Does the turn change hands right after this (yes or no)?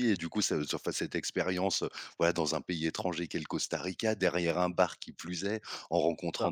no